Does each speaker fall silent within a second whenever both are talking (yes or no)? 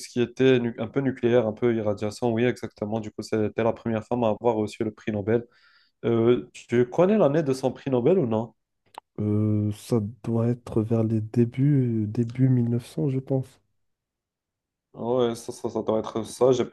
yes